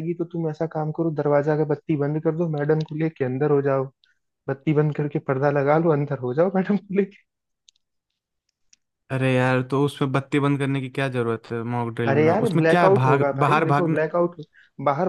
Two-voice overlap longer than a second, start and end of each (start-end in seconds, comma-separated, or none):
12.1-14.0